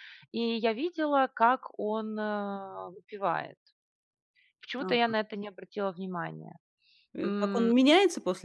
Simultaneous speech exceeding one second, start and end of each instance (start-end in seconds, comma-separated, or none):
none